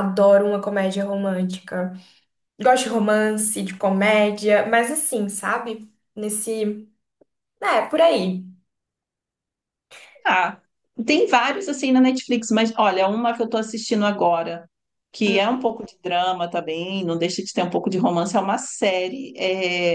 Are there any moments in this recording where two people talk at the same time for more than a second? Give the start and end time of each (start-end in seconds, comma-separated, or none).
none